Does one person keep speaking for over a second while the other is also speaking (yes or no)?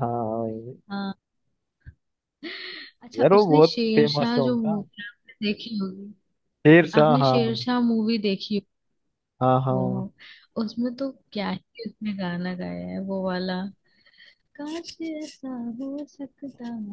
yes